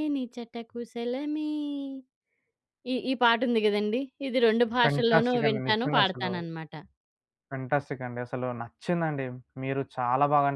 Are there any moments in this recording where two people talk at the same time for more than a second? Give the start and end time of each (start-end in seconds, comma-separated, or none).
4.8-6.3